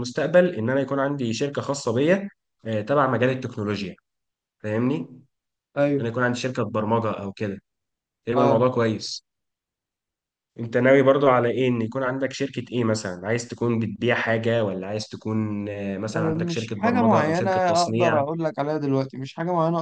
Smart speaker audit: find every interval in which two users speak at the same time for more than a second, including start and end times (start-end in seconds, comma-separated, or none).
16.1-18.2